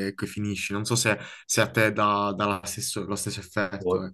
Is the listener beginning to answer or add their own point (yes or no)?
yes